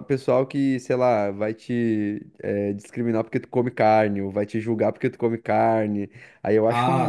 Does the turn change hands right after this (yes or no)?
no